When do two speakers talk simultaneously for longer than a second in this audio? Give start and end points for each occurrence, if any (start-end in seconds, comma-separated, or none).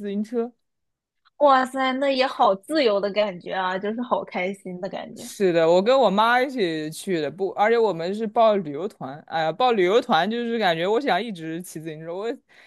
none